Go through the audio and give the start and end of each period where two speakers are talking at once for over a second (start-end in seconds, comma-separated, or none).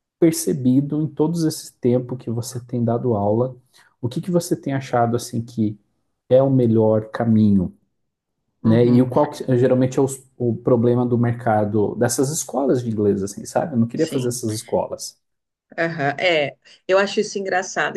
none